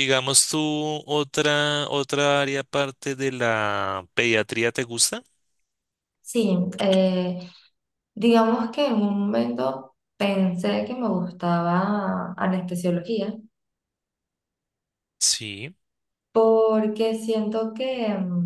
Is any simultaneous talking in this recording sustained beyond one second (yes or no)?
no